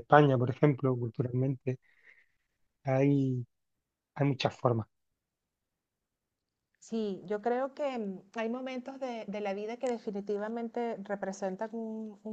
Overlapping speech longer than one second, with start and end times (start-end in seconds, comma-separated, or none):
none